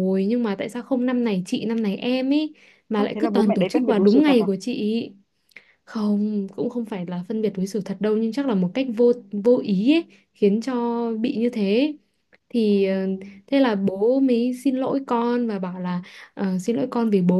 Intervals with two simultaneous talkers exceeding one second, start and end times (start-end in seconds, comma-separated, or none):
2.9-4.5